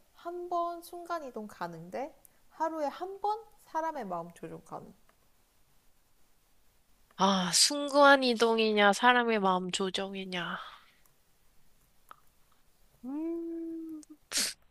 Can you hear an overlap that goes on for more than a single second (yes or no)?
no